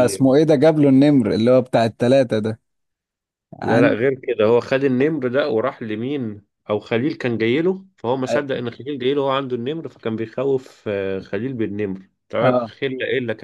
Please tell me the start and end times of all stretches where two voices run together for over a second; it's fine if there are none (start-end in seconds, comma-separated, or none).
none